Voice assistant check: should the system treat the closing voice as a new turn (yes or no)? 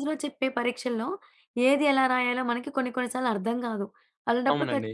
no